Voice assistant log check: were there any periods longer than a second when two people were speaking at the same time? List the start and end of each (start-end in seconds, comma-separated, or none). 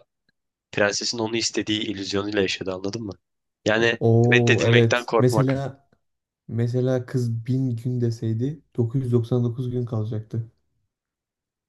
4.0-5.5